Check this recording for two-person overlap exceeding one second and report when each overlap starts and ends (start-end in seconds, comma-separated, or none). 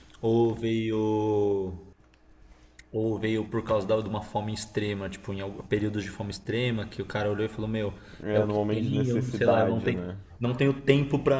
8.3-10.0